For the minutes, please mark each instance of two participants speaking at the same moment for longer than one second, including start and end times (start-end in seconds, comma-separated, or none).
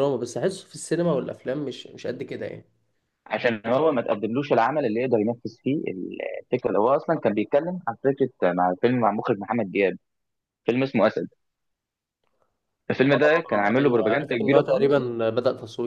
13.0-15.1